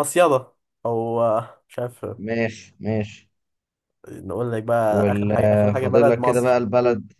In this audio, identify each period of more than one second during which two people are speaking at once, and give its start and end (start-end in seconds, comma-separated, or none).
4.9-6.6